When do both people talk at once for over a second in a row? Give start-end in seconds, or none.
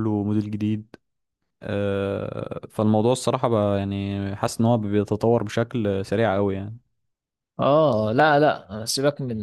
none